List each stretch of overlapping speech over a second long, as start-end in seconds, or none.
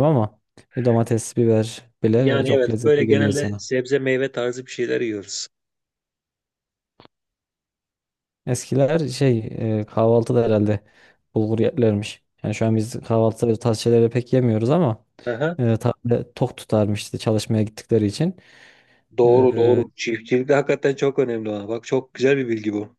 2.1-3.6